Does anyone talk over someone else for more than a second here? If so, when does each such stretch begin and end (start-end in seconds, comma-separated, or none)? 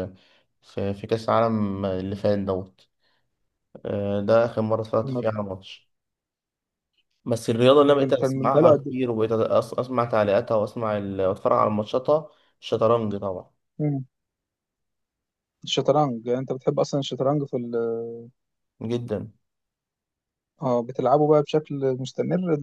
7.9-9.1